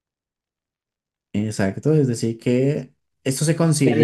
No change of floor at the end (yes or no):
no